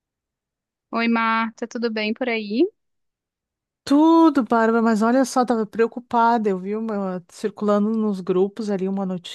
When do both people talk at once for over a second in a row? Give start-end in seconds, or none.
none